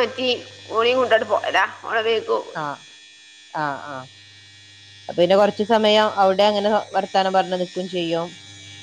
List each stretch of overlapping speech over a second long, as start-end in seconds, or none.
none